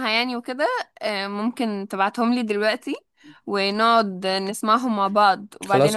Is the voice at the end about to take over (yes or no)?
yes